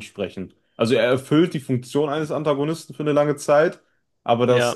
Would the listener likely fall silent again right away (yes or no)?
yes